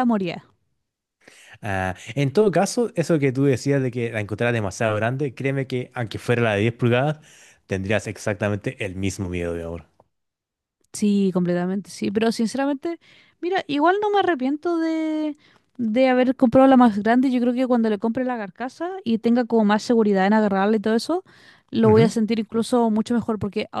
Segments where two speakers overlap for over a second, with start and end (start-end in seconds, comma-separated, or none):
none